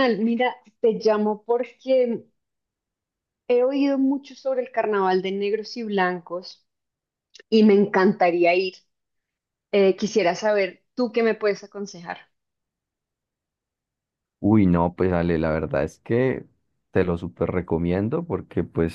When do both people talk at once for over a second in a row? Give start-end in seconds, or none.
none